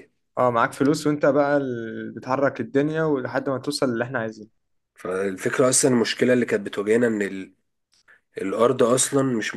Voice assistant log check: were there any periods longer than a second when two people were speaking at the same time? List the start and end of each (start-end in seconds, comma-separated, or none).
none